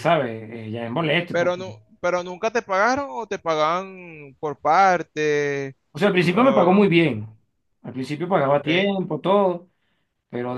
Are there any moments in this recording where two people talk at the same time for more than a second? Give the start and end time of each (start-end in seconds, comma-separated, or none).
none